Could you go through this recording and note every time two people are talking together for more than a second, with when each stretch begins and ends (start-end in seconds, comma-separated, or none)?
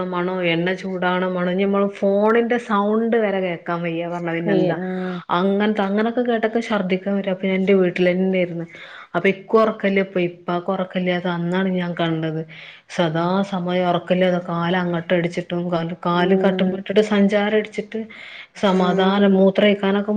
none